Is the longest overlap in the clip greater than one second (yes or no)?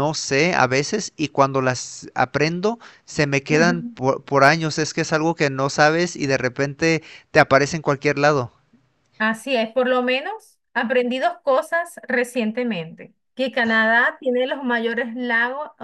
no